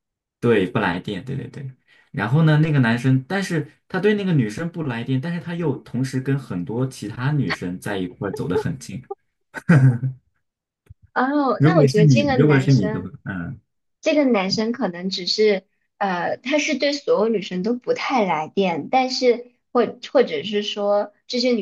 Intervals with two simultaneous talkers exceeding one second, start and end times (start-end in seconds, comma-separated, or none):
11.6-13.1